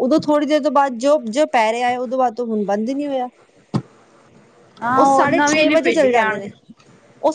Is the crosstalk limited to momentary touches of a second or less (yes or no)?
no